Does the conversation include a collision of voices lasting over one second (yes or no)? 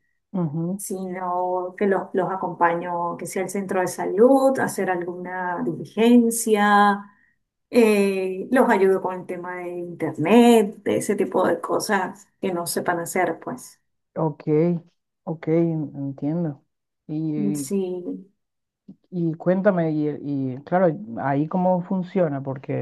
no